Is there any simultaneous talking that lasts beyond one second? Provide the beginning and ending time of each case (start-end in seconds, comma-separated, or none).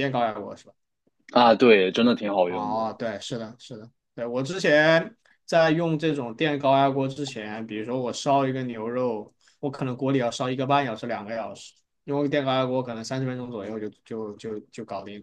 none